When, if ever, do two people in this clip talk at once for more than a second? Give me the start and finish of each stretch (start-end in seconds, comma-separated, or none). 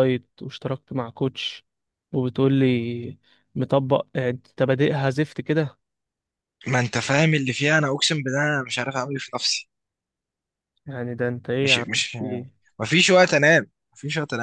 none